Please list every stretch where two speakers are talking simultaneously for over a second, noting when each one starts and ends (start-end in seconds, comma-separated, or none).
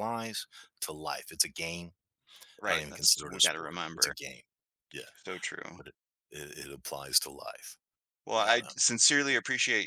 2.6-4.1